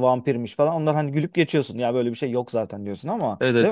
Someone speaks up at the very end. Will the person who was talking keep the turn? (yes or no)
no